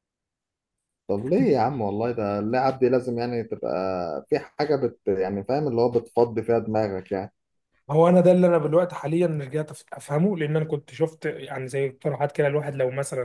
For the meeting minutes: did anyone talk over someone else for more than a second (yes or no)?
no